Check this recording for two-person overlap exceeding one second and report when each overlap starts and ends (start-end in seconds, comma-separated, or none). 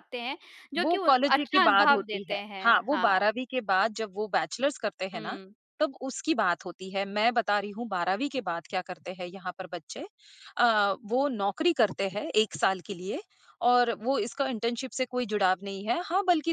0.8-3.2